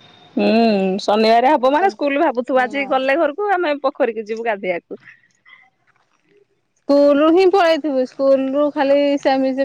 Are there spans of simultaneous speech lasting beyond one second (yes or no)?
yes